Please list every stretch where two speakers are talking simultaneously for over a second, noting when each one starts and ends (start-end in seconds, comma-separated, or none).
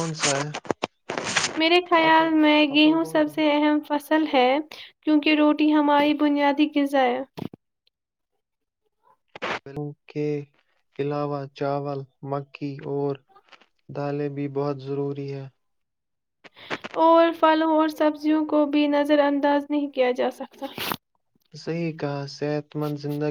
2.0-3.4